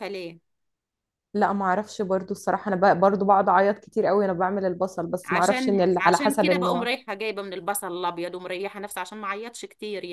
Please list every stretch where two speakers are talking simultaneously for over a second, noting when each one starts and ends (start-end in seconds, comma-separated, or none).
5.2-6.9